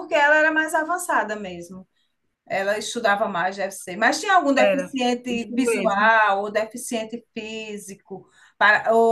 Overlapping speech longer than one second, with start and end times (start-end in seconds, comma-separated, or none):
4.6-6.1